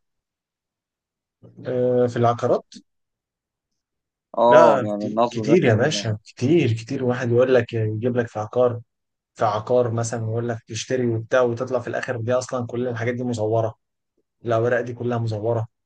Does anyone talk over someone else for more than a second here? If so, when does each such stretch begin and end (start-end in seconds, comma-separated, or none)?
4.5-6.0